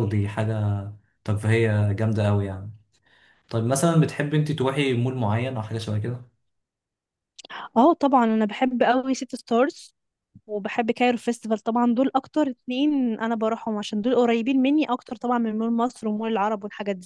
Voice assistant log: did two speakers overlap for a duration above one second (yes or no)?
no